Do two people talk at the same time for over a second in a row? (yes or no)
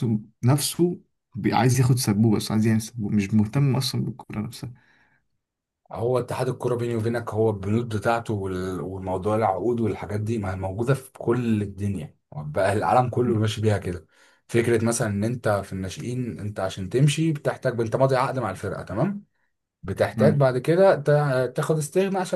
no